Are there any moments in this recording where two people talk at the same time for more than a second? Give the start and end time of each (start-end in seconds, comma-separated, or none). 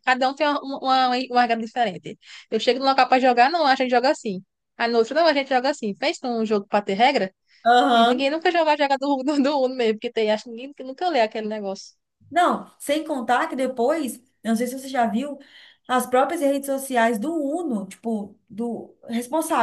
none